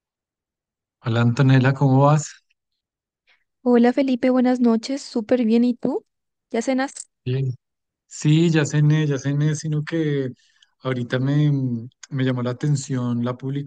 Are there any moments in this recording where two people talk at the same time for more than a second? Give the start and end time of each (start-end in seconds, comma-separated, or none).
none